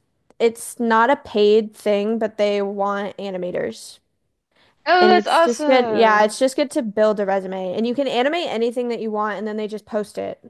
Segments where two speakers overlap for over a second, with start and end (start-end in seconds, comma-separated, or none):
5.0-6.3